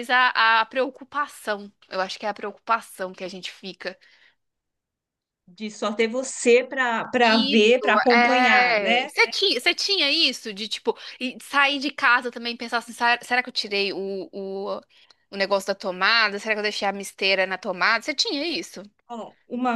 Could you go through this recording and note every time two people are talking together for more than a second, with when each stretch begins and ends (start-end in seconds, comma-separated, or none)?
7.2-9.1